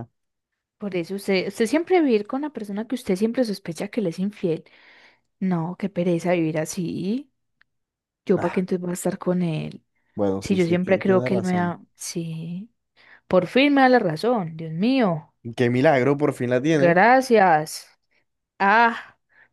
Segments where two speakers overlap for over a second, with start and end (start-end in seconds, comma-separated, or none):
10.4-11.8